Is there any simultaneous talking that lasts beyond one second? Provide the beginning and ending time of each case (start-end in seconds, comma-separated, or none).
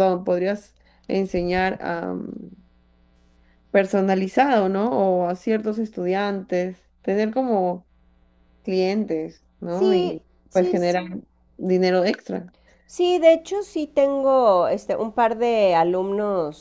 9.7-11.0